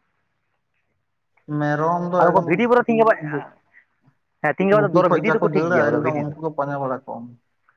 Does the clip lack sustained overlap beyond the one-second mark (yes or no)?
no